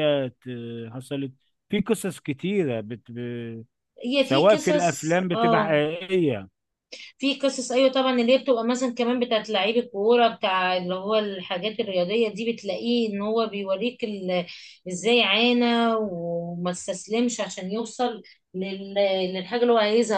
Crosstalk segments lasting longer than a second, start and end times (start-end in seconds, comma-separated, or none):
4.2-5.8